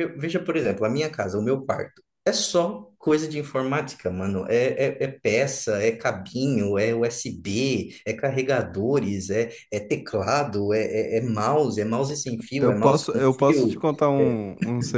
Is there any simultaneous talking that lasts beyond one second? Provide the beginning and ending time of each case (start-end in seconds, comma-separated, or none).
12.6-14.4